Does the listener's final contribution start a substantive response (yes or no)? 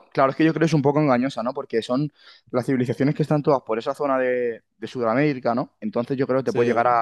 no